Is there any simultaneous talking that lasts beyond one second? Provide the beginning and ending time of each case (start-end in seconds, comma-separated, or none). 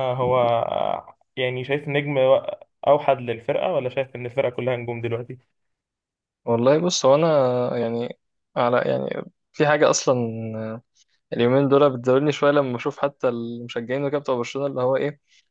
none